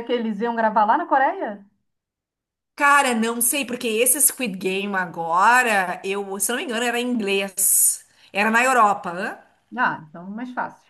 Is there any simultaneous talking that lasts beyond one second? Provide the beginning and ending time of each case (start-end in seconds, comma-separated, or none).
none